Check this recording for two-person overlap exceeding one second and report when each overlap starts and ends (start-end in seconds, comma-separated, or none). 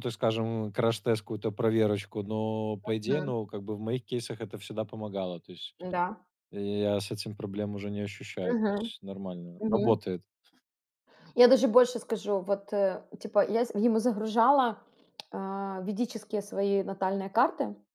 none